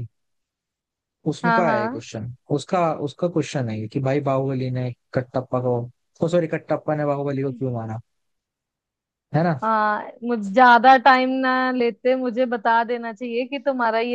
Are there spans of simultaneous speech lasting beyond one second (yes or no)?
no